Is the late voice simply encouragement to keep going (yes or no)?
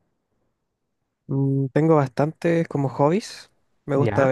yes